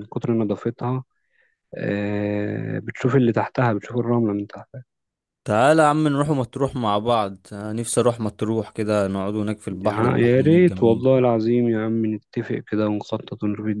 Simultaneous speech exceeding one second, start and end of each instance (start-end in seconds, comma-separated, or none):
9.8-11.1